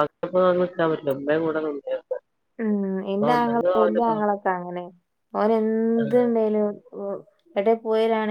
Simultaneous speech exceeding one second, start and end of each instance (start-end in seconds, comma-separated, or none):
none